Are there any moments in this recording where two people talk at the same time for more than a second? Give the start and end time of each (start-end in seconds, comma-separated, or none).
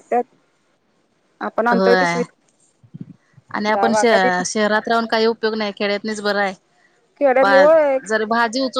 none